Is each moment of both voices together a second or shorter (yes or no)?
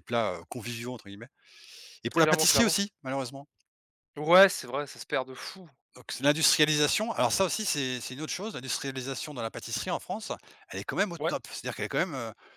yes